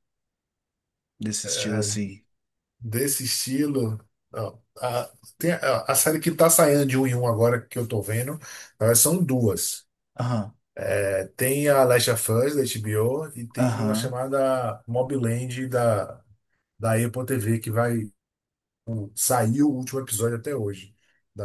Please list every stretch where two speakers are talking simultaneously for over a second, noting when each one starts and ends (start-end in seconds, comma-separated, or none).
none